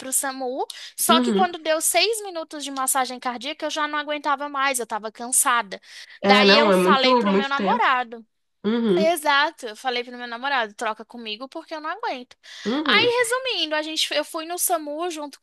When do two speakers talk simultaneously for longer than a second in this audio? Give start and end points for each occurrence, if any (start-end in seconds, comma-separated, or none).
6.2-7.8